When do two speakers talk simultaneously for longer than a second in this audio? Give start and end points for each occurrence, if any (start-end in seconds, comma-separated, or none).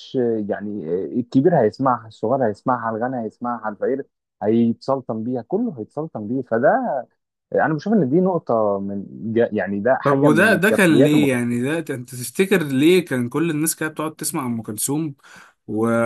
10.0-11.4